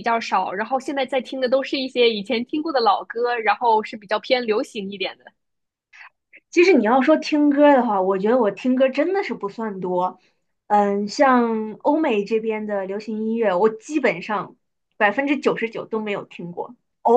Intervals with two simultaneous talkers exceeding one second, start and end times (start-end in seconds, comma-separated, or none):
none